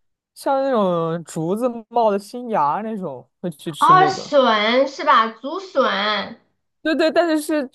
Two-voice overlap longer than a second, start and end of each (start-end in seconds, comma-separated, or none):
none